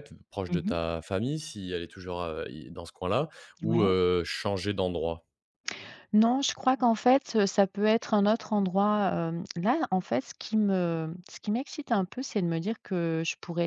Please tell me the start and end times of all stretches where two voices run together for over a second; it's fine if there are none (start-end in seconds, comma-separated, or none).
none